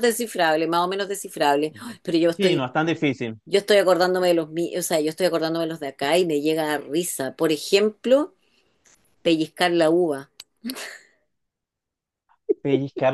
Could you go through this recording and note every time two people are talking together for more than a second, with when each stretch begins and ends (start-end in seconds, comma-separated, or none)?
none